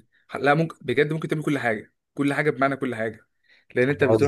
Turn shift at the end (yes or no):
no